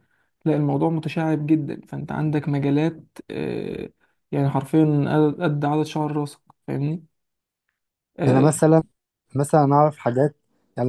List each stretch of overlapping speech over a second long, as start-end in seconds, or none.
none